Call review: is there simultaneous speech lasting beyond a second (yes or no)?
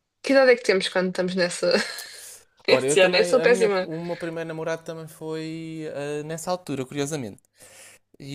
yes